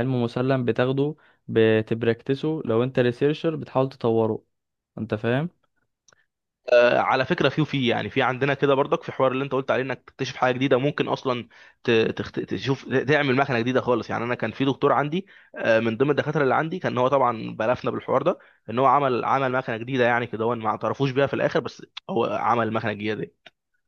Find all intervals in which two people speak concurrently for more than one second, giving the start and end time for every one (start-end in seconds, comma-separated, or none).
none